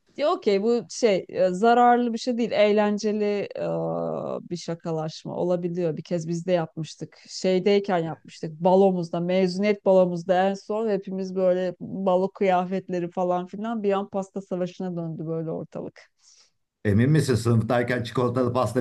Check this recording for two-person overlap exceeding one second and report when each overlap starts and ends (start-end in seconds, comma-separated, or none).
none